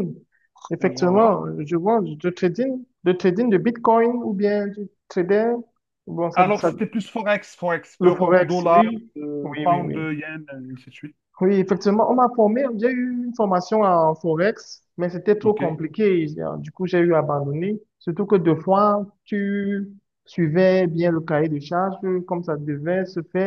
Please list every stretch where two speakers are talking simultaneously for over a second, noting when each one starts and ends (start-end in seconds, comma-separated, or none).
8.0-10.0